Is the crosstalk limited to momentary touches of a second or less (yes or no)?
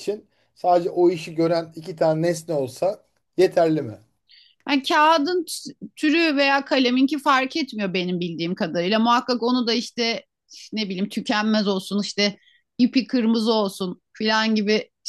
yes